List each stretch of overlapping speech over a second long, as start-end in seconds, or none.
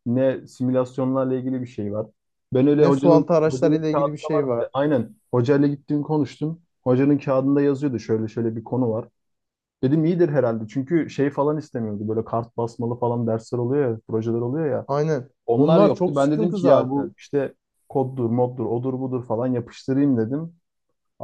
2.8-4.7, 15.4-17.1